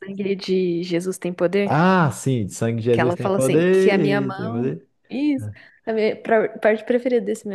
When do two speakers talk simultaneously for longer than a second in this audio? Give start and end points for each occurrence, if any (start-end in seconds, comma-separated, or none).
2.9-4.9